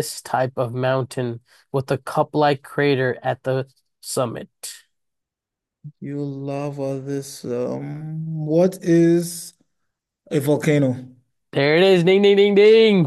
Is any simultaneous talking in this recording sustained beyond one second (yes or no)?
no